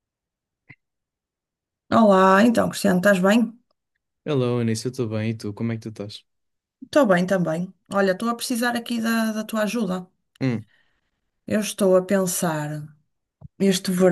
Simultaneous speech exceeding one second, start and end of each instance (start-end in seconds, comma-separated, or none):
none